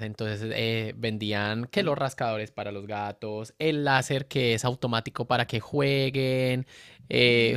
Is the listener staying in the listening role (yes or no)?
yes